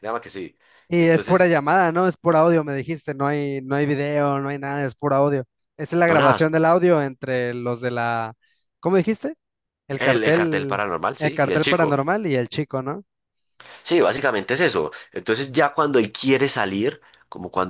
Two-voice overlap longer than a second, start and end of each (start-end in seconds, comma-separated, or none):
10.0-12.0